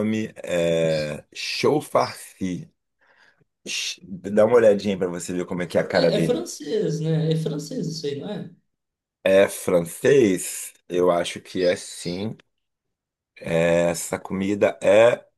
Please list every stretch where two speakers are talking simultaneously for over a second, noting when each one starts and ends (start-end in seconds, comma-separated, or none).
none